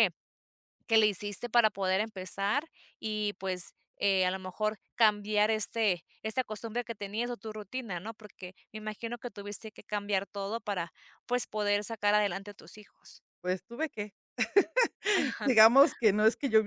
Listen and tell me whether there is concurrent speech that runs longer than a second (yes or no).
no